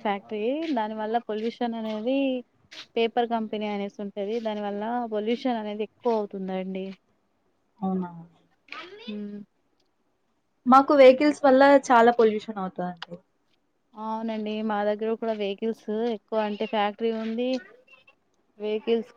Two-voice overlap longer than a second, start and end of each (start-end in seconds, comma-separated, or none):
none